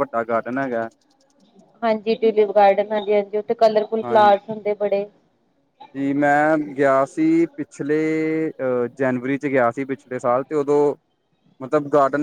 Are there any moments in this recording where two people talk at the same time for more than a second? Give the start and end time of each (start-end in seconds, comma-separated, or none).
none